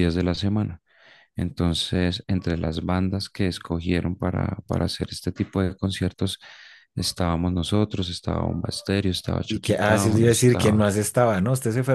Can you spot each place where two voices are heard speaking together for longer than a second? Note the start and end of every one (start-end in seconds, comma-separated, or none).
9.5-10.8